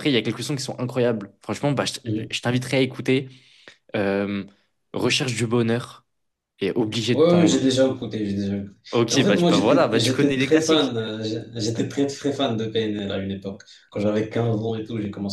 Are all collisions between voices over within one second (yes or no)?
no